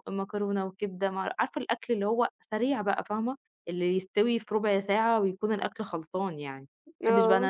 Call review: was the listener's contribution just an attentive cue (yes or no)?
yes